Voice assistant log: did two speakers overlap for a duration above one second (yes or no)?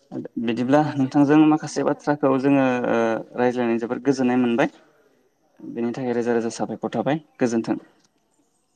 yes